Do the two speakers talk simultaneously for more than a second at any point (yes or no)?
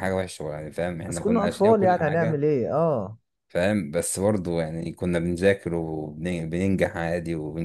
yes